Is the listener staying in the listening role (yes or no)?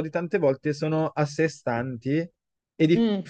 yes